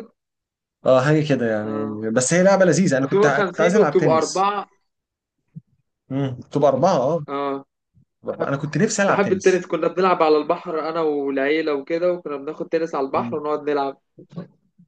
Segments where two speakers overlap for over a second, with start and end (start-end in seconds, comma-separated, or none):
3.0-4.5